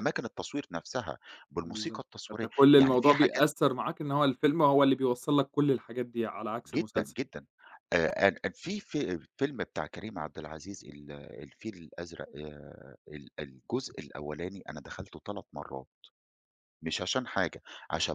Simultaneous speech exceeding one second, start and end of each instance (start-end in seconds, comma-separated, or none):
1.6-3.5